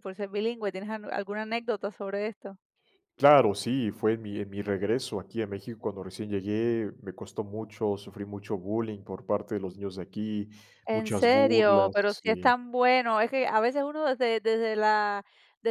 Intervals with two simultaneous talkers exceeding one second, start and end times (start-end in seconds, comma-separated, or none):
10.9-12.5